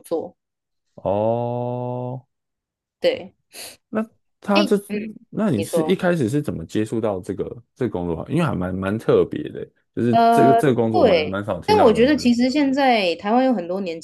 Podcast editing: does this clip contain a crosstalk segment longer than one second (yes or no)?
yes